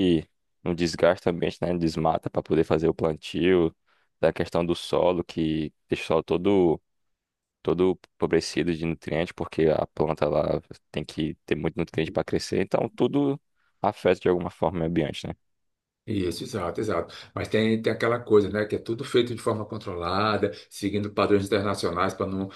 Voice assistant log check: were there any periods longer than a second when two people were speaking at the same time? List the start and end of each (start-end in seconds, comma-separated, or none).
none